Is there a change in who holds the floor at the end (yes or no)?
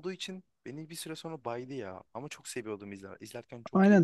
yes